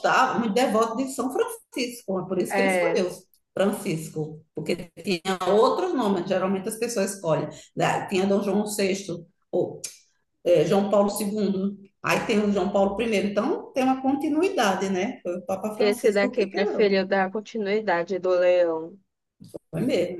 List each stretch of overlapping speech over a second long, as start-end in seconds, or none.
15.8-17.0